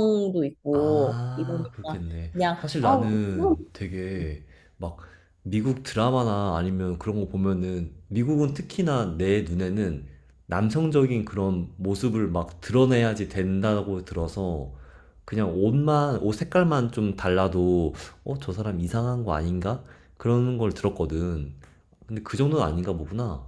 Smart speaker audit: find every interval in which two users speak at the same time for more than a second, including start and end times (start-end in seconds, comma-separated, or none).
0.7-3.6